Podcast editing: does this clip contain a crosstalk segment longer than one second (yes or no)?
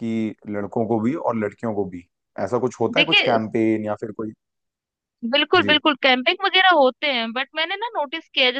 no